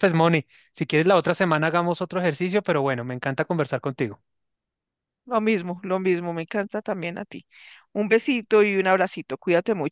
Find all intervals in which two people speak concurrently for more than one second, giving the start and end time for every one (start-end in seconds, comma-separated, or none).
none